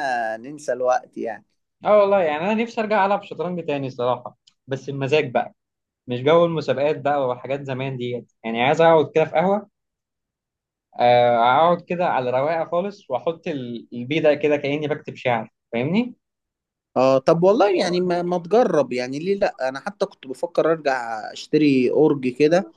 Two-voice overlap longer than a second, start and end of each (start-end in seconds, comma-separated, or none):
none